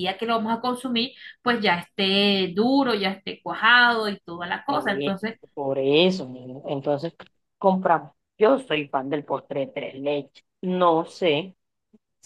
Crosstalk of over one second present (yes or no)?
no